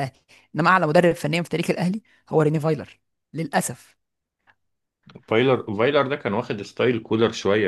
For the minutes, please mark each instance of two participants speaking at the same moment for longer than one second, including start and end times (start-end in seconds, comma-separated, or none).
none